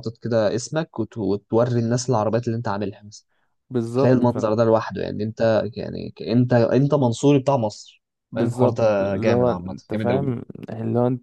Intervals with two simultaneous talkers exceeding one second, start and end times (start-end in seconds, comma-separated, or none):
8.3-10.3